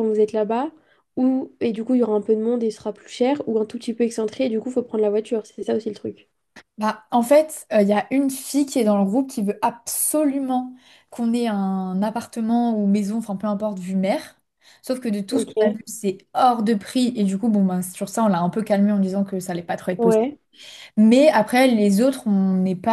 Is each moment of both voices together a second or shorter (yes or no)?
yes